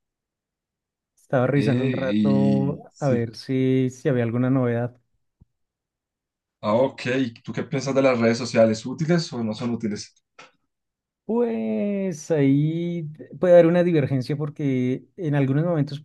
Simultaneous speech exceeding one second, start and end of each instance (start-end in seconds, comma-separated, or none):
1.6-3.3